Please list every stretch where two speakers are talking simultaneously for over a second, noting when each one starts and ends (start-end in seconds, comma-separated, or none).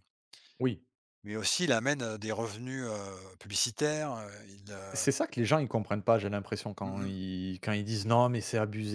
none